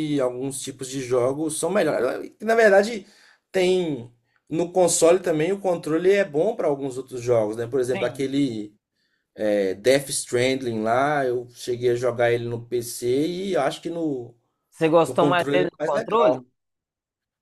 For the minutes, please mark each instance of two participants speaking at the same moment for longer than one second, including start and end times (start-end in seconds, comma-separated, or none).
15.0-16.4